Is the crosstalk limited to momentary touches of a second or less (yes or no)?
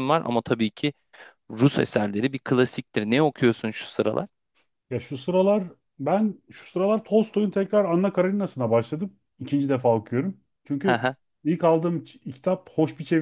yes